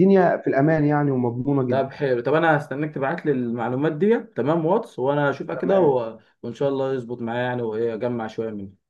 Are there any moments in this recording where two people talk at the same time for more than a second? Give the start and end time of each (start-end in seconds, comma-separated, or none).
none